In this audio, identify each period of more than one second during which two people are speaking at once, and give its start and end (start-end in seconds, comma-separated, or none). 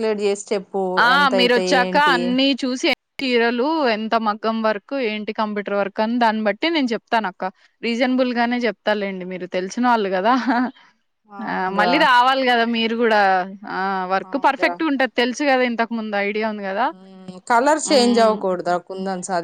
none